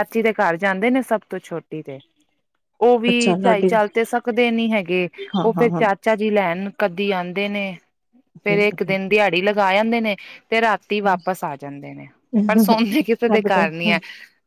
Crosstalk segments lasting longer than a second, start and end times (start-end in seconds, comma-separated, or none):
none